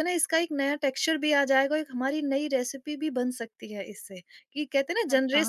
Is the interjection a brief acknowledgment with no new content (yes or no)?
no